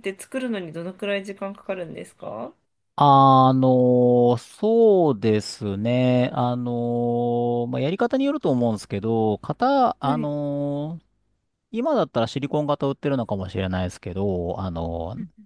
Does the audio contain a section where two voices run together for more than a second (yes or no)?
no